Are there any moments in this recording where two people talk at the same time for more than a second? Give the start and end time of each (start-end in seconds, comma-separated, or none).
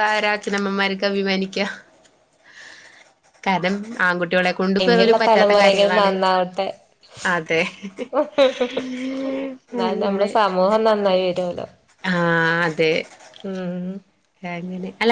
4.8-6.1